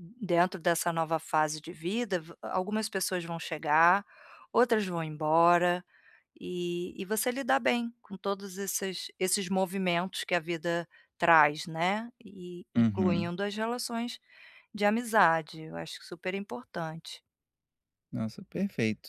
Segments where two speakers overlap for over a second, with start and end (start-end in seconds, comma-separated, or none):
none